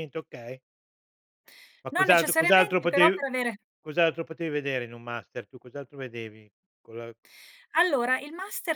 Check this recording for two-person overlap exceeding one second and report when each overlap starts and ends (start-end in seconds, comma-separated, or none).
1.9-3.2